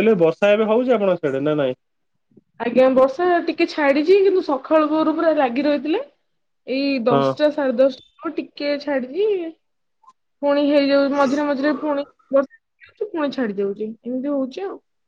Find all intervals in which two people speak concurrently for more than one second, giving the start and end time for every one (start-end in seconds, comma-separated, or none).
none